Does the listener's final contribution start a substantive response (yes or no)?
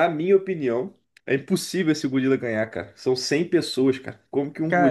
yes